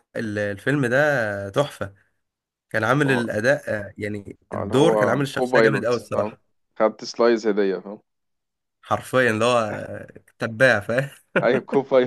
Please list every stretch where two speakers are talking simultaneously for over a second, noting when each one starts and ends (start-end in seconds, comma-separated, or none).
4.5-6.4